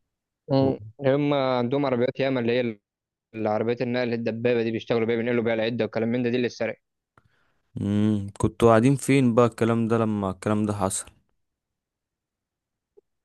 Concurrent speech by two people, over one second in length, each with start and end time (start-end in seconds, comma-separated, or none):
none